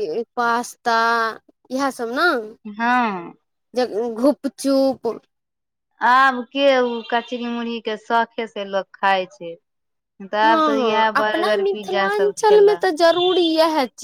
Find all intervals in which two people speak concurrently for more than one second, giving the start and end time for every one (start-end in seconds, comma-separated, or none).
10.4-12.8